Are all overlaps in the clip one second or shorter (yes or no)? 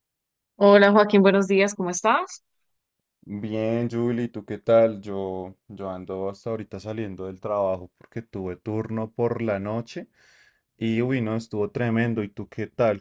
yes